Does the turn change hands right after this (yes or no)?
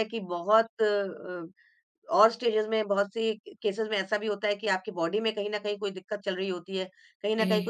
no